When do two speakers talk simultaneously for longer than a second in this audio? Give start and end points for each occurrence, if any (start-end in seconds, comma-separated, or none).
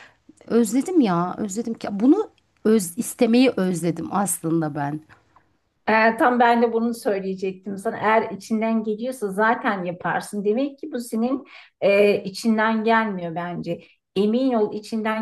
none